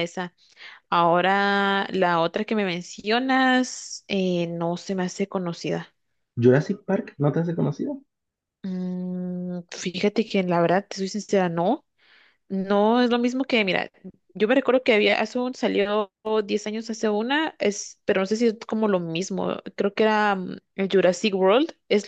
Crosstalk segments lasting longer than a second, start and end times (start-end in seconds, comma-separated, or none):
none